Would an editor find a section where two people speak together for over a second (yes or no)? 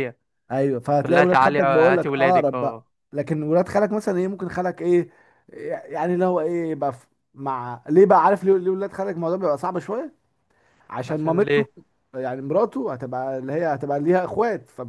yes